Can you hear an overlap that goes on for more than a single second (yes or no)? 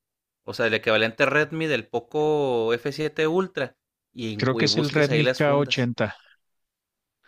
yes